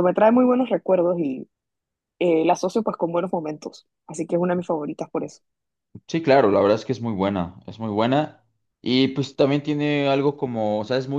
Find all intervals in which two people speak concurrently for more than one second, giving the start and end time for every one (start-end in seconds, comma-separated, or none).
none